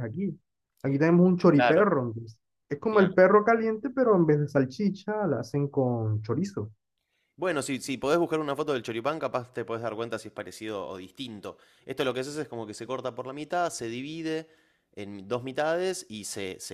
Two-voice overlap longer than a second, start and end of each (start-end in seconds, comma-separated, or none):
none